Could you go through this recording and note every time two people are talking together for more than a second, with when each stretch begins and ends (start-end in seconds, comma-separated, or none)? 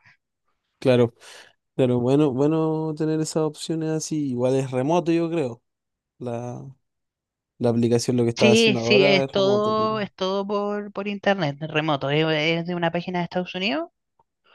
8.4-9.8